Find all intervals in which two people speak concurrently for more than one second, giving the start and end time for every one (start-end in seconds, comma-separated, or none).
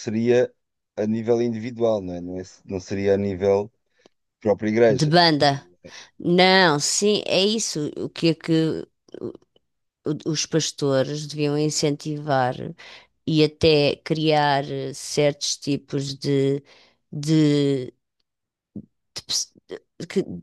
none